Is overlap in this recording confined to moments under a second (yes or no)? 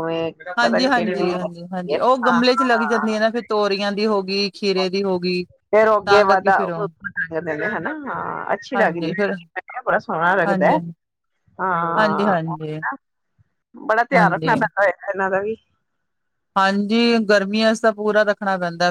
no